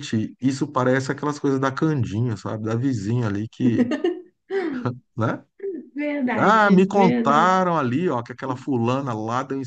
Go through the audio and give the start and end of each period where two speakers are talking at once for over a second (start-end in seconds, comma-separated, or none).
6.4-7.6